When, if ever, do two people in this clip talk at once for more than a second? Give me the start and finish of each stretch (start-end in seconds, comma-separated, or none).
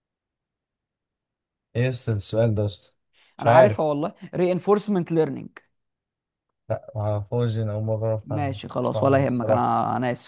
8.2-9.8